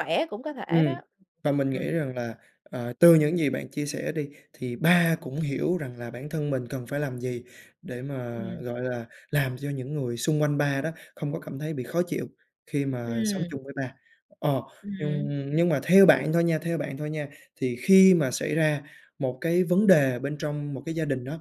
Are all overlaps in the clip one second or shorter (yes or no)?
yes